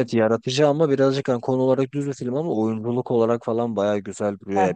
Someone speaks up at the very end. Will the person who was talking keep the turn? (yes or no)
yes